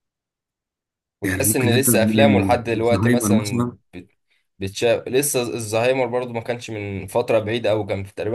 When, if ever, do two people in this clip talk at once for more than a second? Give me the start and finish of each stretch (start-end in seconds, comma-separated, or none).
1.2-3.8